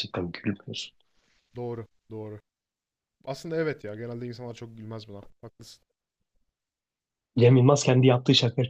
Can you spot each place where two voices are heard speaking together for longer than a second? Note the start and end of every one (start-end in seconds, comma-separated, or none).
none